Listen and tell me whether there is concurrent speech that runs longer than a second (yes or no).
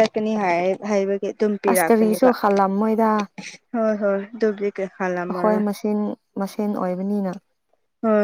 no